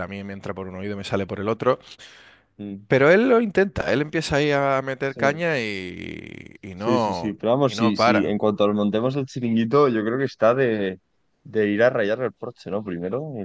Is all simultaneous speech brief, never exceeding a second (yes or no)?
no